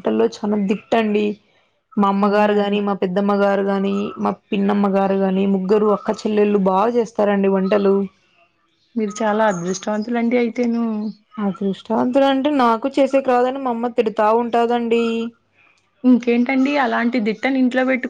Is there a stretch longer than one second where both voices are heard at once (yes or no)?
no